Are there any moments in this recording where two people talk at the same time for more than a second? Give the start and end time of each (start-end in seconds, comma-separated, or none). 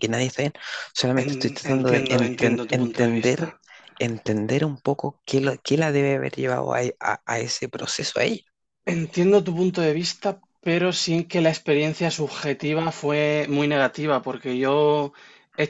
1.1-3.5